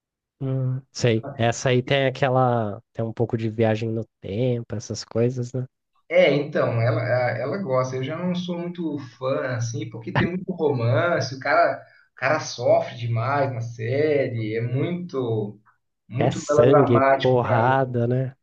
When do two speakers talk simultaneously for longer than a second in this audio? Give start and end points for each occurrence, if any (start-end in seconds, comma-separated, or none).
16.2-17.8